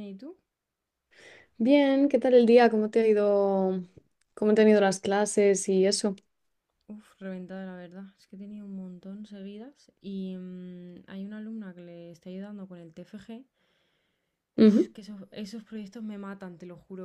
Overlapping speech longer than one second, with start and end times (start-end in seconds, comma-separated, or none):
none